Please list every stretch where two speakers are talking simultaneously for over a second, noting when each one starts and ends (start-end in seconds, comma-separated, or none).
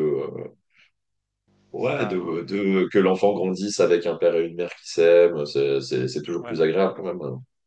1.8-3.2